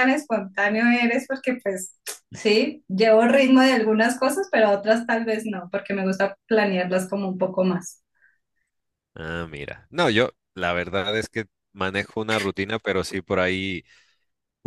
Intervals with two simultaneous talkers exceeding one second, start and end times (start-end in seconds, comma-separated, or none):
none